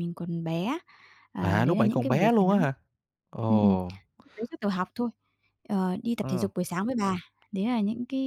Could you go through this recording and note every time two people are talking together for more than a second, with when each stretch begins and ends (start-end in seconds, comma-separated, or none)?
1.4-2.7